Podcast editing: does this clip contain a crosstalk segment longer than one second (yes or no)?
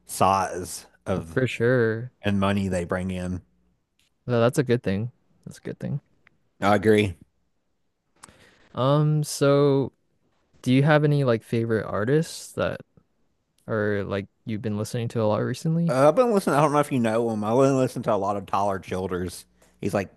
no